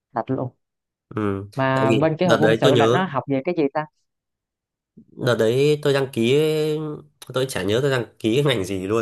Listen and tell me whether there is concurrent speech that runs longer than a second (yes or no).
yes